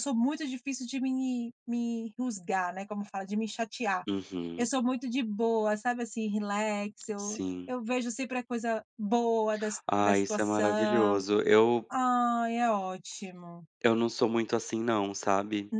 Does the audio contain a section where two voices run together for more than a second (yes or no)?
yes